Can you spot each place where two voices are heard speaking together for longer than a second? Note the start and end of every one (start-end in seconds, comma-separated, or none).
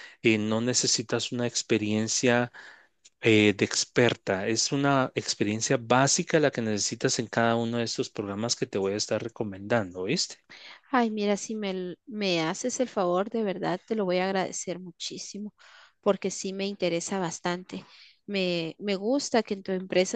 none